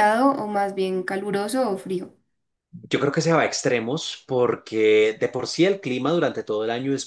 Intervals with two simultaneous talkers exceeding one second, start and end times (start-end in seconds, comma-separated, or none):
none